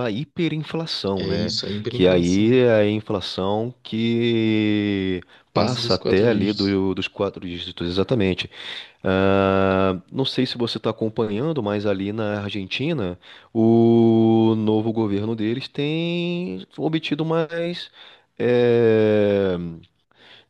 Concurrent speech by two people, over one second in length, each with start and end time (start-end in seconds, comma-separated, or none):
1.2-2.6, 5.5-6.8